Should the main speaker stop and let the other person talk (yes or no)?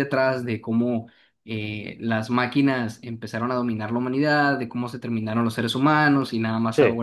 no